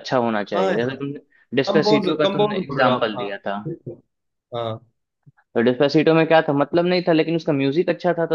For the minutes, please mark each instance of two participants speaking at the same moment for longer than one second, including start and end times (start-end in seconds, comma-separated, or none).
1.7-3.3